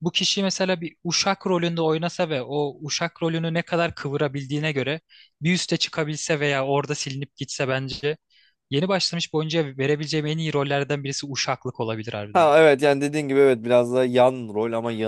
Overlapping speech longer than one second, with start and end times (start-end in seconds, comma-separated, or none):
none